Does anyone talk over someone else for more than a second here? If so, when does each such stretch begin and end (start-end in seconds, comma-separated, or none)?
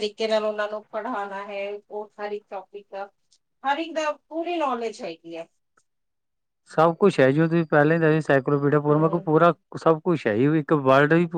none